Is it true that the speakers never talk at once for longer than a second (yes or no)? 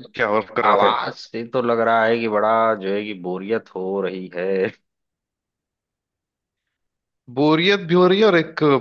yes